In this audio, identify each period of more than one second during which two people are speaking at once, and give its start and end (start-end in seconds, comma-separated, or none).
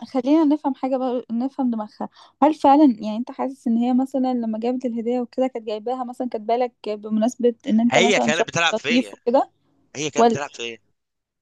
7.9-9.2